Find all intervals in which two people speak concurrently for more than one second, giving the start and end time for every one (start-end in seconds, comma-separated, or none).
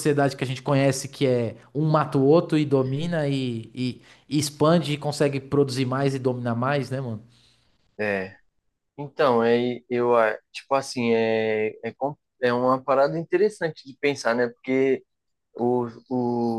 none